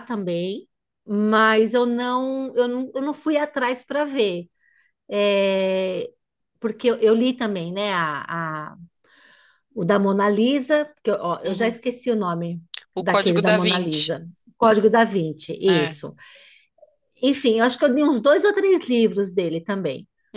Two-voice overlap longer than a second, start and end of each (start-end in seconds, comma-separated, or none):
13.0-14.2